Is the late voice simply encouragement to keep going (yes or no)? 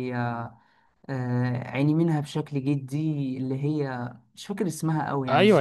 no